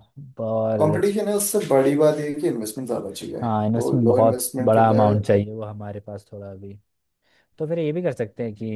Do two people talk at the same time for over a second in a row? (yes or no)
yes